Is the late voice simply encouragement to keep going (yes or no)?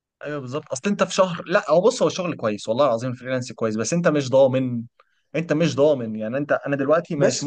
yes